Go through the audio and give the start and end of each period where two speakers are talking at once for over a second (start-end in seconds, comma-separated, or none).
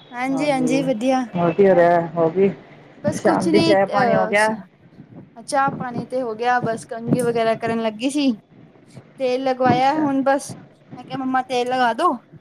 none